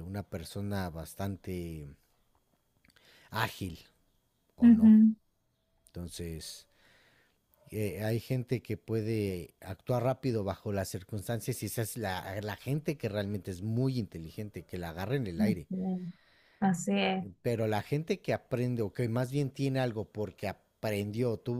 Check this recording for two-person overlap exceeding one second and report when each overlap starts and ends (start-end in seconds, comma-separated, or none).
none